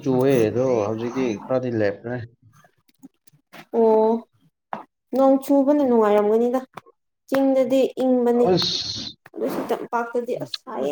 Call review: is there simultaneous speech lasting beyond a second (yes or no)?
no